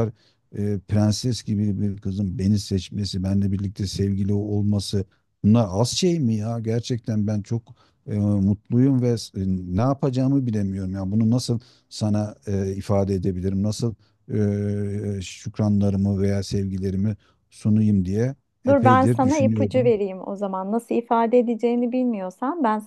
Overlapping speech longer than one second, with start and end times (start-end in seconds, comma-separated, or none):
18.7-19.9